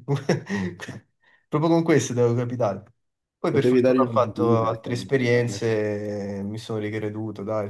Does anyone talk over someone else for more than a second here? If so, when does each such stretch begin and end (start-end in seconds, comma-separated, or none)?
3.5-5.6